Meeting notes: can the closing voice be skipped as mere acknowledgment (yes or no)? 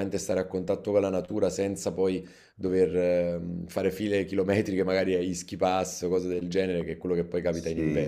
no